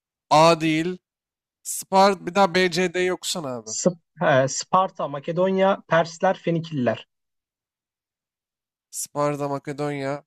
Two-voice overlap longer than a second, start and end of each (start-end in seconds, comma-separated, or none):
none